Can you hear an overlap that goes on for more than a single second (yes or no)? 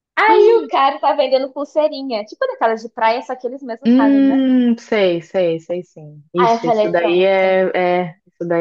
yes